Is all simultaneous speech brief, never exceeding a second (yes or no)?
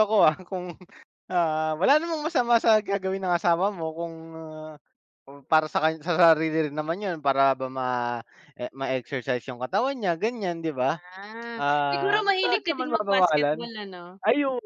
no